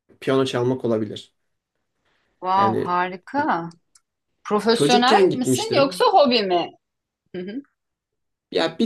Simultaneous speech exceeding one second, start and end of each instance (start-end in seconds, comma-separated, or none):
4.7-6.0